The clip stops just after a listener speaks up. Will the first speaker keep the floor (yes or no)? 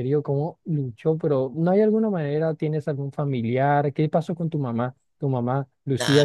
no